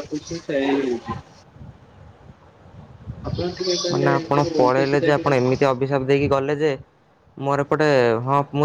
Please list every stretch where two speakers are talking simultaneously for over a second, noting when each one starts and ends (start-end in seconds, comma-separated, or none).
3.9-5.7